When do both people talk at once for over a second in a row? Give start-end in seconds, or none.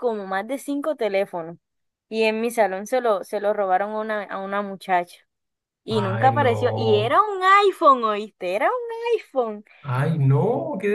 5.9-7.2